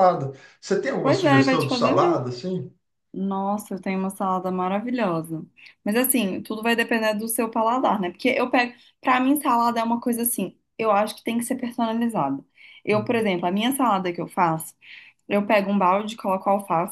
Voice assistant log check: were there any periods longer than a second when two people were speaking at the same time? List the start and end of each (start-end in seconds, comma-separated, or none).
1.0-2.2